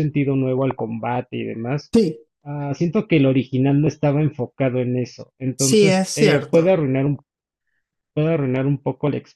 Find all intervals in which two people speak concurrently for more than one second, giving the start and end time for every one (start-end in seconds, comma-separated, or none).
5.6-6.8